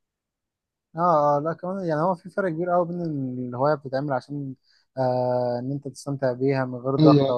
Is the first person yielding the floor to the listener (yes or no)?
no